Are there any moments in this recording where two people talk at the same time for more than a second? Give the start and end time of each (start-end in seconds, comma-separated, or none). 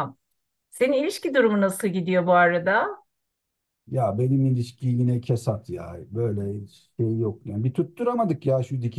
none